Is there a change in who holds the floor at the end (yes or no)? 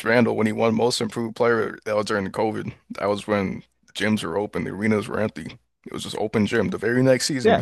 yes